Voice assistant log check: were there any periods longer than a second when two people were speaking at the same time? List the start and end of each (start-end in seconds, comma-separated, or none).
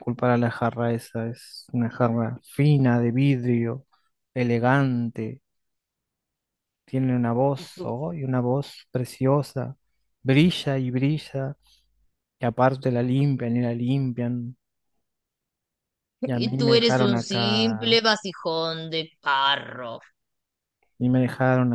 16.2-18.0